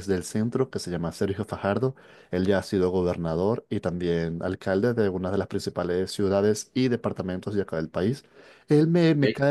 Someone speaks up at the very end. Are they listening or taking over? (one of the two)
listening